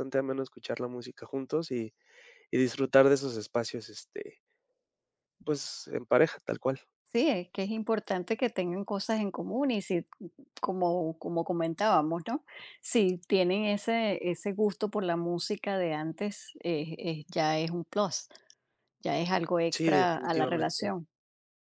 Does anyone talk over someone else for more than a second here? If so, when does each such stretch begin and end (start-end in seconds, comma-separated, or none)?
19.7-20.9